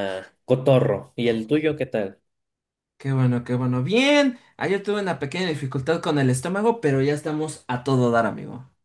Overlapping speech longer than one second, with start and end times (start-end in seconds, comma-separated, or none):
none